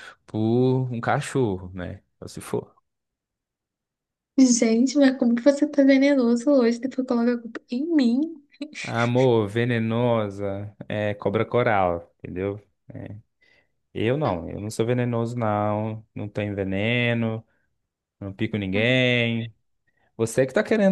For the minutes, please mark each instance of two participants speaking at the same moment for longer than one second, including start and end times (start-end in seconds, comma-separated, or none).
none